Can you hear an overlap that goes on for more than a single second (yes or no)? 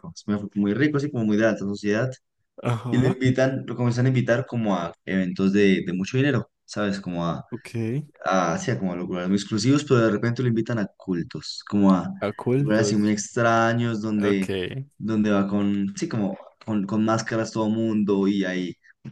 no